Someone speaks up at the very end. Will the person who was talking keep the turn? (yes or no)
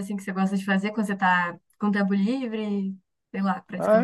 no